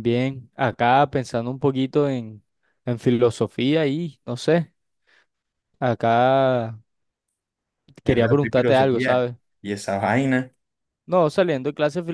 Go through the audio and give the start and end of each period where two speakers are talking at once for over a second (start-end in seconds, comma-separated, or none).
8.0-9.3